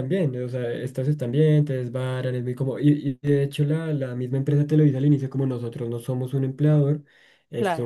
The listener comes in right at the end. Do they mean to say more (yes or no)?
no